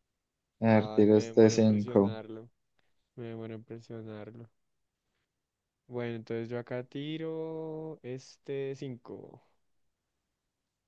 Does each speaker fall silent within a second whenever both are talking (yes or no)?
no